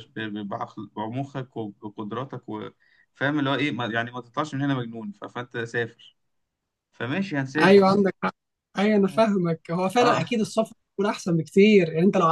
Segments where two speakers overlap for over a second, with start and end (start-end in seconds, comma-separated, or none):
none